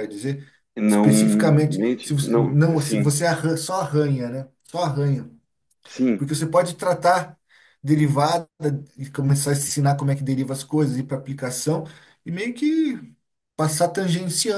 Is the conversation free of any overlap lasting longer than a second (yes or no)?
no